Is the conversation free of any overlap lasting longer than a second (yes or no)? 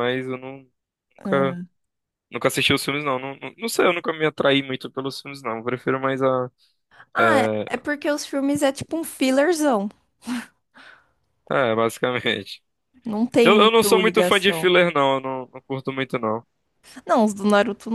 no